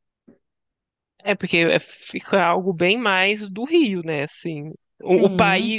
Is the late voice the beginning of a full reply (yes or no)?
no